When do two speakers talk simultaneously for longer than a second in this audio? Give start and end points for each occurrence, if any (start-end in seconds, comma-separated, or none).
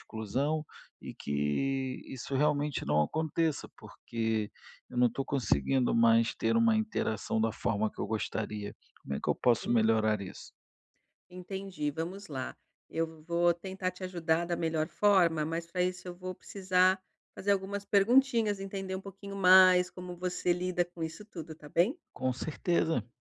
none